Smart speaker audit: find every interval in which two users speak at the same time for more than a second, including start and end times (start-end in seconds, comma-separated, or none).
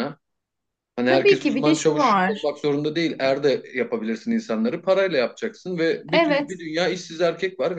1.1-2.5